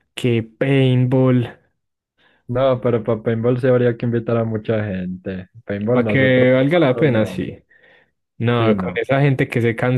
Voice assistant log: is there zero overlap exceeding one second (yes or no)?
no